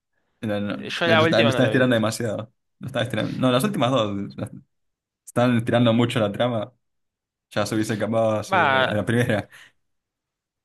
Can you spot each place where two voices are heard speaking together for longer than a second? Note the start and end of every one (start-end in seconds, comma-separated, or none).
0.8-2.2